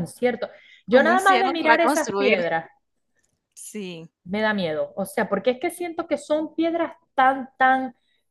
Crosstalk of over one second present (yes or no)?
yes